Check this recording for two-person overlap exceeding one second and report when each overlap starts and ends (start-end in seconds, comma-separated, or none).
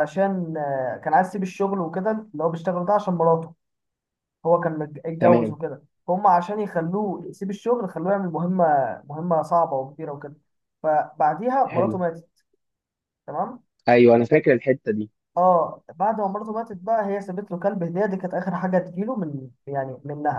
none